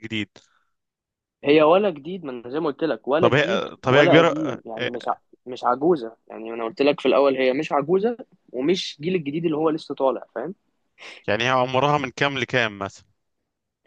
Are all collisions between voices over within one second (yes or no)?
no